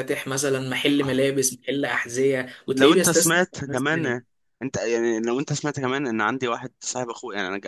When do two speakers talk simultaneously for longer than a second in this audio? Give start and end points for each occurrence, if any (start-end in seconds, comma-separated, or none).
2.7-4.2